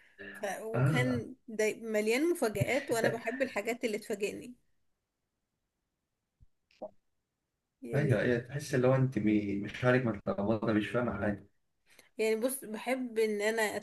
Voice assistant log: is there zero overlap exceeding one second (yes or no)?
yes